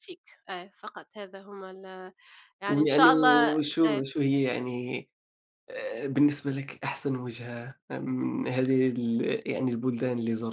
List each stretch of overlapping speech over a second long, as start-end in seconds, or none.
2.7-4.0